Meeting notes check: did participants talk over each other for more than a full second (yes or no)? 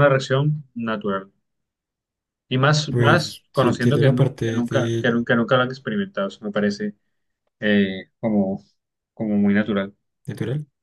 yes